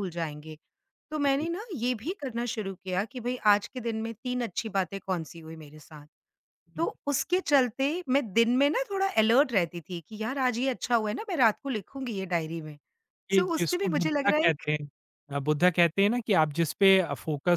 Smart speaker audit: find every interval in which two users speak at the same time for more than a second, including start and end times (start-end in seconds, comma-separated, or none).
13.4-14.6